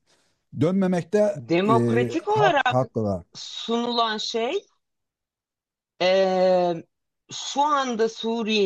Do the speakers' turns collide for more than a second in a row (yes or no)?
yes